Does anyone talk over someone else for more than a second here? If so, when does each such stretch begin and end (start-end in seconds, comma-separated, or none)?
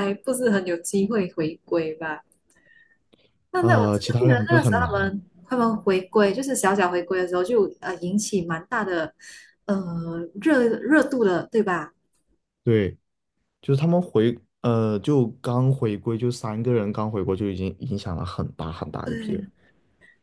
3.6-5.1